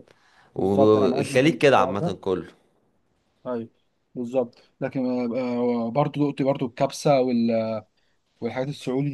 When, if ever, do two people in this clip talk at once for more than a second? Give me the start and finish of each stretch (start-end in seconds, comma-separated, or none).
0.6-2.2